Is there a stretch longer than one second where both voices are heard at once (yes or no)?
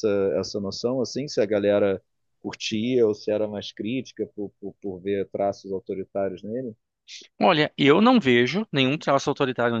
no